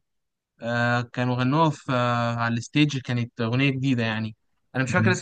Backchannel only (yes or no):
yes